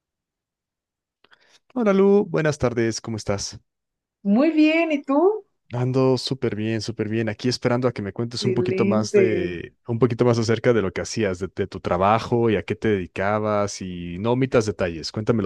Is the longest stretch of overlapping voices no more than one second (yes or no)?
no